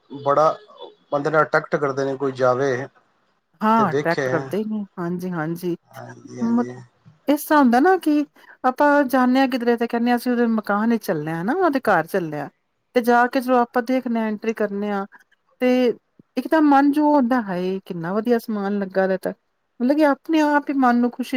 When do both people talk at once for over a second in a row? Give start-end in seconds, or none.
none